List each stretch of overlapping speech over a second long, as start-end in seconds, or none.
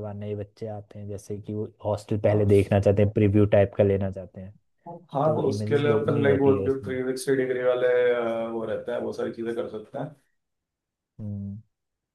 5.2-6.9